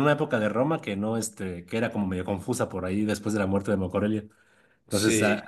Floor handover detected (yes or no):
no